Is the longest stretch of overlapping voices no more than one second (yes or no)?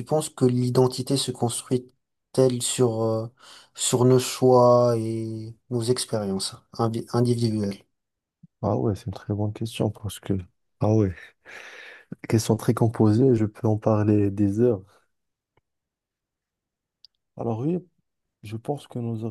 yes